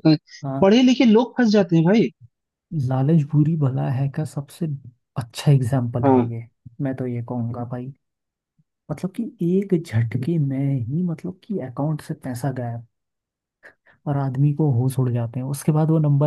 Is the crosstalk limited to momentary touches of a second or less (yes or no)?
yes